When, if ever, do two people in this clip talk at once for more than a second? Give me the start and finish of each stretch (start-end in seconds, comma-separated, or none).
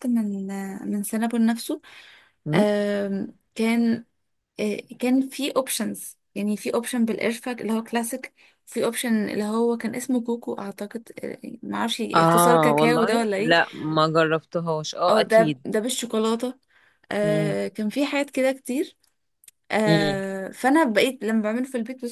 12.1-13.6